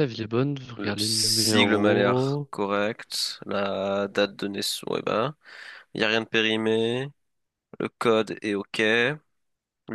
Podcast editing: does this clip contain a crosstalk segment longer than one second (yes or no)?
yes